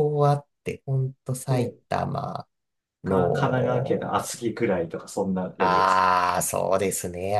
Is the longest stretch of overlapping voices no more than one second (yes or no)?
no